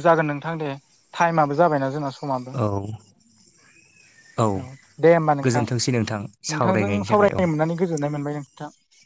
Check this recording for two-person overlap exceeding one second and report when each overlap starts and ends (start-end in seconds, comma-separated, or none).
5.4-7.4